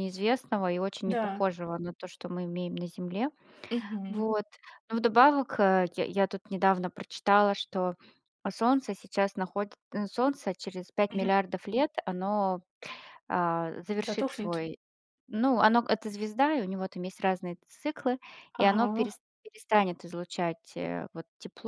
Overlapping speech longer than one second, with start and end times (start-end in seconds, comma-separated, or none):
none